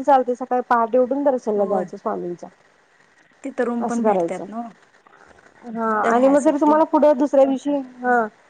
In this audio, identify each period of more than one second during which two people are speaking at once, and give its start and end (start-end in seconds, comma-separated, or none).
none